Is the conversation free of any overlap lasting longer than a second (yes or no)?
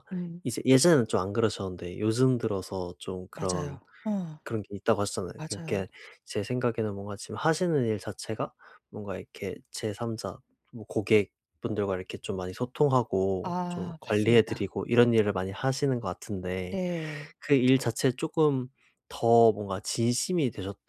no